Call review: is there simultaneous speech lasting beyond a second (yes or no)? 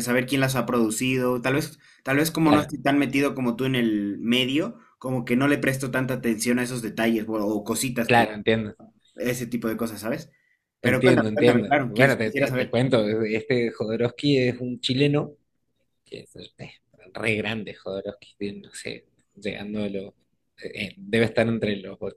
yes